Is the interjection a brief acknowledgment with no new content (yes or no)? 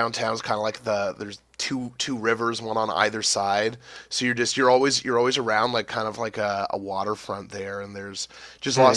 no